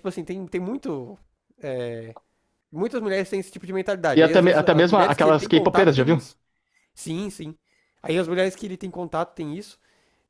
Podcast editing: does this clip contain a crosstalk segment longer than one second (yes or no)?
yes